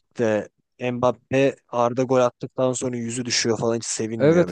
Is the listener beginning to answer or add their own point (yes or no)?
yes